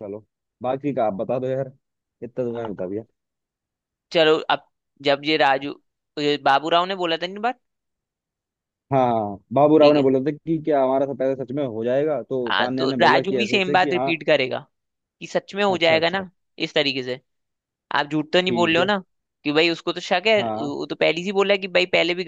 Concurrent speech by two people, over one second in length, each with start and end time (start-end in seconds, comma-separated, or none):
12.5-14.1